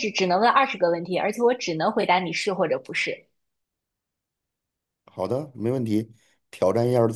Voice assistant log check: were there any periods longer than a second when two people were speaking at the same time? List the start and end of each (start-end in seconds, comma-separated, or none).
none